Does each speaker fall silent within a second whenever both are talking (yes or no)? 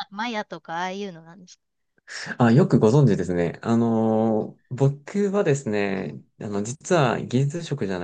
yes